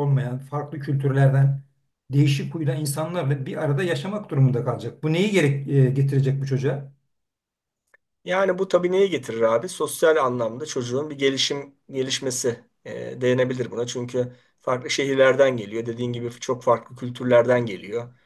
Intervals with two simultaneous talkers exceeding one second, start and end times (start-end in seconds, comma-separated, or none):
none